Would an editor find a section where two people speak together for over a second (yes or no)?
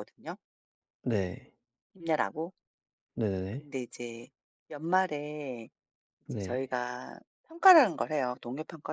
no